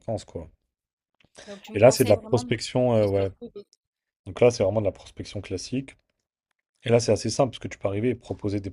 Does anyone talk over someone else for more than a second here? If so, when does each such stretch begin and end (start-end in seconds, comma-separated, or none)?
1.7-3.3